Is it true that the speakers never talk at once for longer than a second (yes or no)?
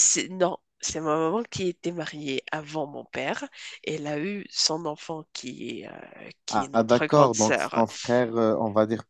no